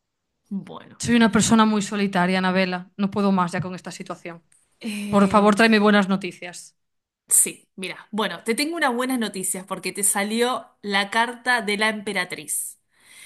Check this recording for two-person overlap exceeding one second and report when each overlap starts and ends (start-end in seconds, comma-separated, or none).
none